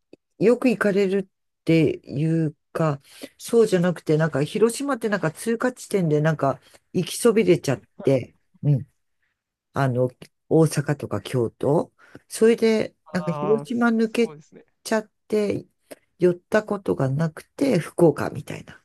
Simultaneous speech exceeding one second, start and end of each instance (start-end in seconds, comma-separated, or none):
13.1-14.3